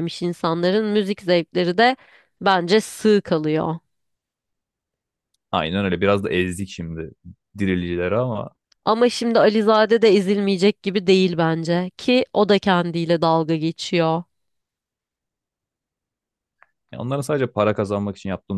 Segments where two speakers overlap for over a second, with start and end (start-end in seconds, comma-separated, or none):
none